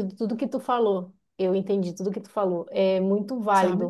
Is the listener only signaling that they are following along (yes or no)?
yes